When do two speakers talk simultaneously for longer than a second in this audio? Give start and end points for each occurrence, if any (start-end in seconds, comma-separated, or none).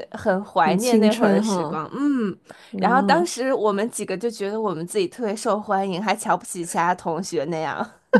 0.6-1.8